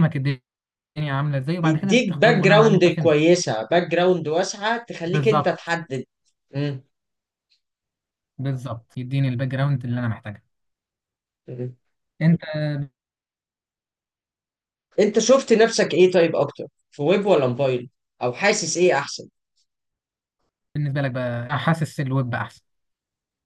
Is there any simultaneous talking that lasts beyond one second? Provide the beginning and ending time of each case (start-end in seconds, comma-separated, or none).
1.6-3.2